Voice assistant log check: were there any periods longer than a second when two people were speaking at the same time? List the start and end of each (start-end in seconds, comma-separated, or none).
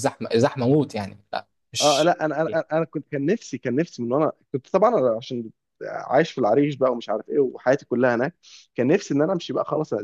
none